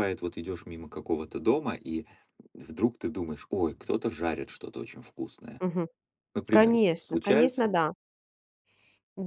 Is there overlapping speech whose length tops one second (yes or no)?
yes